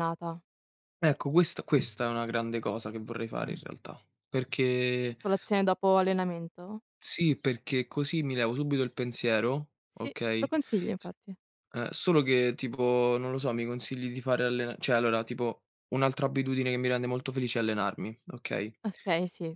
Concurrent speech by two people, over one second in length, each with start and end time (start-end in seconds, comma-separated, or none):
none